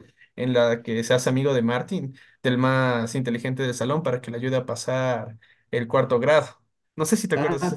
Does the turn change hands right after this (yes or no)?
yes